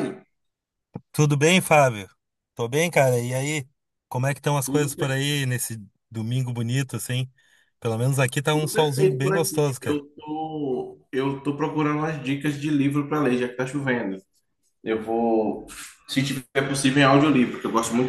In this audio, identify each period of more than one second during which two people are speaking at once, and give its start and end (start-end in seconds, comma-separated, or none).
8.5-10.0